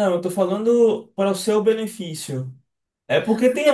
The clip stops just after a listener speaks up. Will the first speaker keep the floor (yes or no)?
yes